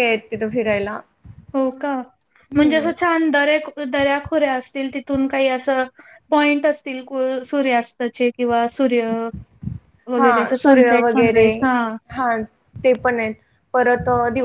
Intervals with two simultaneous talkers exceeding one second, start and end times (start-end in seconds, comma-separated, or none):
10.2-11.5